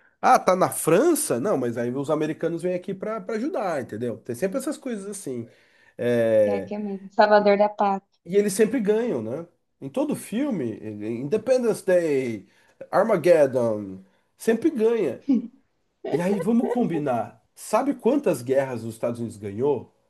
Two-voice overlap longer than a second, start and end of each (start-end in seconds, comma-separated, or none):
none